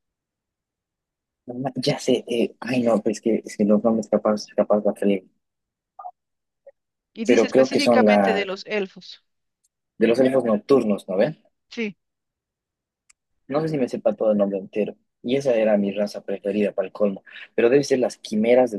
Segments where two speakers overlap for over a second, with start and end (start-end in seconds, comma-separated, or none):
7.3-8.5